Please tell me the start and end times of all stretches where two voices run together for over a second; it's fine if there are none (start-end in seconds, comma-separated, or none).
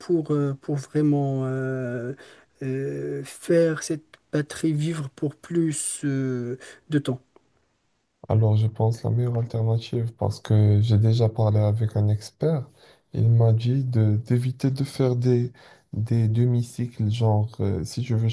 none